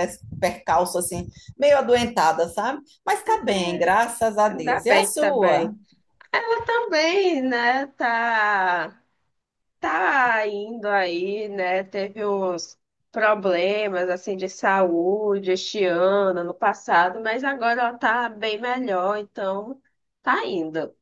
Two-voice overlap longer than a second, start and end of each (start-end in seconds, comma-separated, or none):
4.5-5.7